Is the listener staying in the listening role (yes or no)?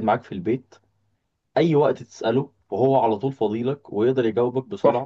no